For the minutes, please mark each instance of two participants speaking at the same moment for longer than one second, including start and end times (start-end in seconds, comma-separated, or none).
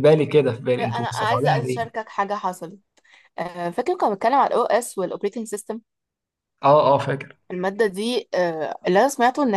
0.8-2.0